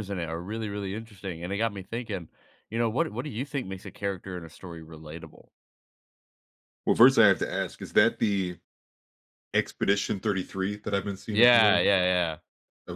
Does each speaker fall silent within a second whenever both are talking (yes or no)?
yes